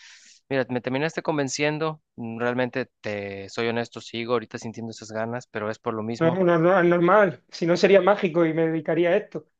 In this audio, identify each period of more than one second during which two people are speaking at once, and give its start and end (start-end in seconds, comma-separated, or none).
none